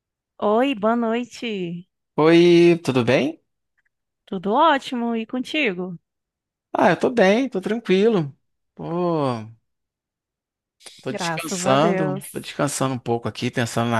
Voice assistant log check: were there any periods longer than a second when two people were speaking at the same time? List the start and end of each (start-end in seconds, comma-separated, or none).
11.1-12.5